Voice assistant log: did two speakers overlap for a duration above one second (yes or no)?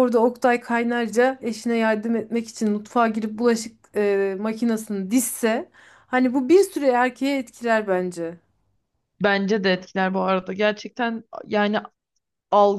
no